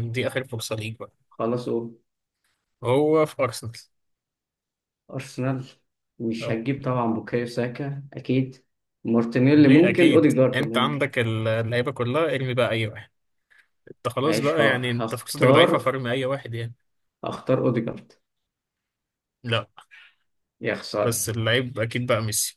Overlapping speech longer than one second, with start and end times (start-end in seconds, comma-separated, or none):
9.5-11.0, 14.2-15.7